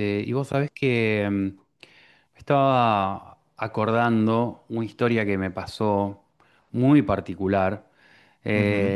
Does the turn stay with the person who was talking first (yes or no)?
yes